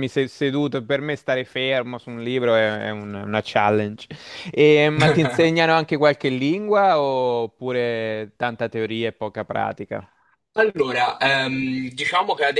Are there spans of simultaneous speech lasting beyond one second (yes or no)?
no